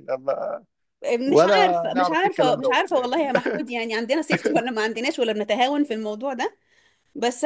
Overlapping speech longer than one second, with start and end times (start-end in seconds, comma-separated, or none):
1.3-3.1